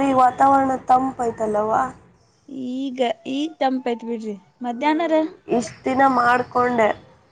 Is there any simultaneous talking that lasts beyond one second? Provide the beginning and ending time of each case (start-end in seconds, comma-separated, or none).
none